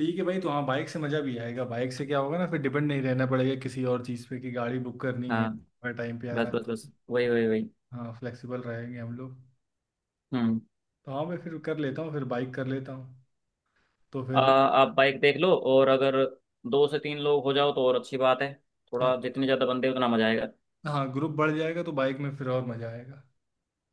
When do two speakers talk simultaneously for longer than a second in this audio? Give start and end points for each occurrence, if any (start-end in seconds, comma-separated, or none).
none